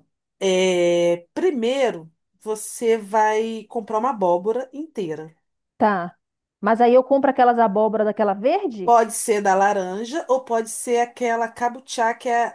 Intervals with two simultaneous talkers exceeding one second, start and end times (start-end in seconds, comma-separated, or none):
none